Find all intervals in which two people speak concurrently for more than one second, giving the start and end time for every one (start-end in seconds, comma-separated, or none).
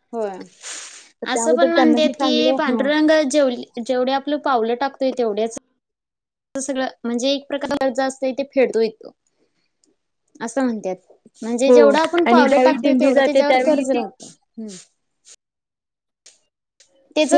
1.3-2.9, 11.7-14.0